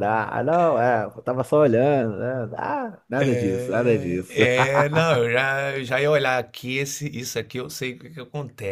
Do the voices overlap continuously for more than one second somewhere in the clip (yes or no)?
no